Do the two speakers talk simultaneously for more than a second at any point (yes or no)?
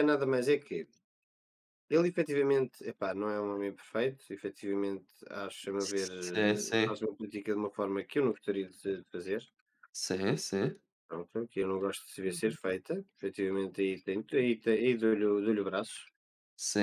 yes